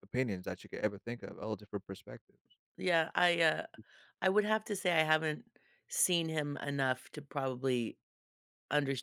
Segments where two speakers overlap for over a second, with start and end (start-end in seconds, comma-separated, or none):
none